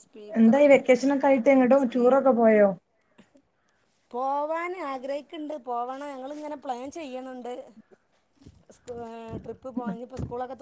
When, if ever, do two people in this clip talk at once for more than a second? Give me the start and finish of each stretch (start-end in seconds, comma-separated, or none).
none